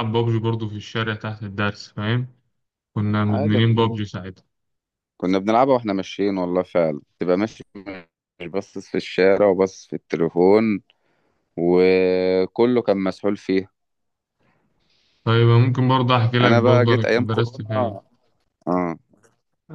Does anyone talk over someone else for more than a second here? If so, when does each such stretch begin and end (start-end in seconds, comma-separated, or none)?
16.4-17.7